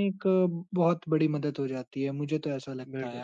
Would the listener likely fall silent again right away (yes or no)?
no